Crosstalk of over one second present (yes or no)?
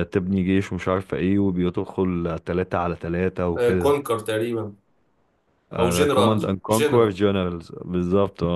yes